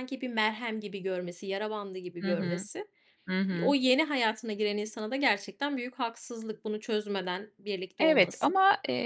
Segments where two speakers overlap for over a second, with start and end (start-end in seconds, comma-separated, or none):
none